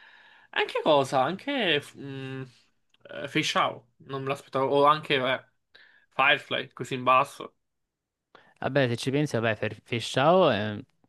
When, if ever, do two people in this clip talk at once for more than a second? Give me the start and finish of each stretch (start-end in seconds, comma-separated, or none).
none